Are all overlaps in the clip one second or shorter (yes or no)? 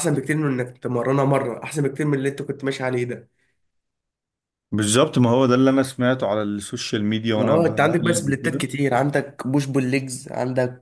no